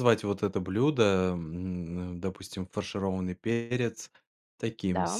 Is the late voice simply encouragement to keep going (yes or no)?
yes